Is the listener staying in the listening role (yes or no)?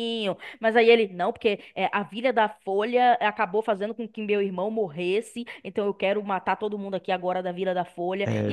yes